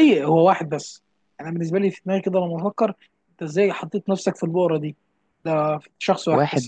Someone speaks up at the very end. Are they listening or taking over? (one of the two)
listening